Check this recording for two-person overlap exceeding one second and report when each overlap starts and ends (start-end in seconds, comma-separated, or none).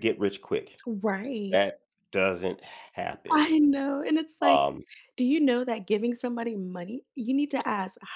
none